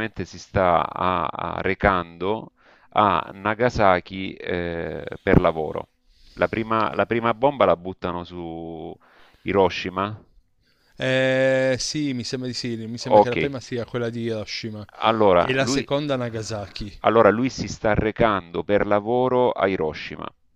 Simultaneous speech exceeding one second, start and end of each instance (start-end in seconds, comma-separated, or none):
none